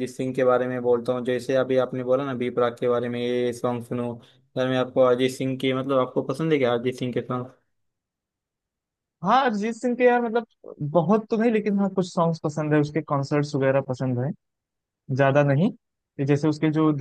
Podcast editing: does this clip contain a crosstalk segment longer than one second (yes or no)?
no